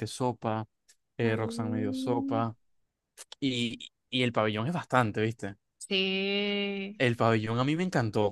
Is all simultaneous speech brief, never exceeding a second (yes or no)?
no